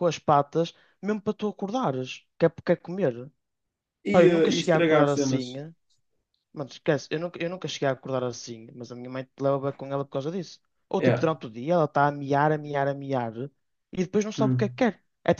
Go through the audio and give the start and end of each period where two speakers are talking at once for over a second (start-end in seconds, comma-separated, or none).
4.1-5.5